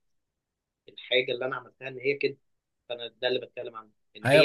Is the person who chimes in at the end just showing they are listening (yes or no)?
no